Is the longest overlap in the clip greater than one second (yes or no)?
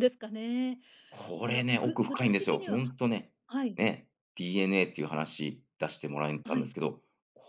yes